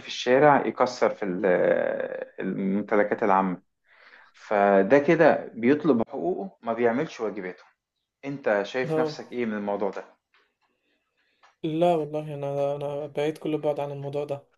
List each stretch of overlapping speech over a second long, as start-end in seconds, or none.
none